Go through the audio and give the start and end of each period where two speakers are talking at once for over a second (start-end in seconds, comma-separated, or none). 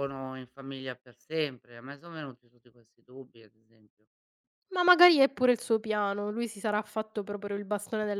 none